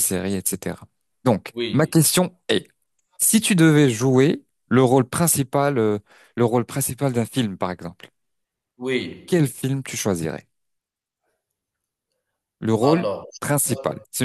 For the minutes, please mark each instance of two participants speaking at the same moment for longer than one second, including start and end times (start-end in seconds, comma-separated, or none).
none